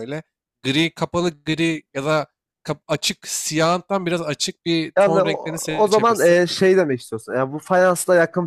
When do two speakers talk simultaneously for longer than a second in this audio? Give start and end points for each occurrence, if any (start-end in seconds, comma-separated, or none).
5.0-6.4